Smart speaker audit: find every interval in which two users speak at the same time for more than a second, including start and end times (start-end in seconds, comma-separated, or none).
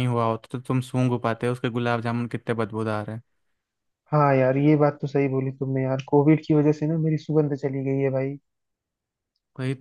none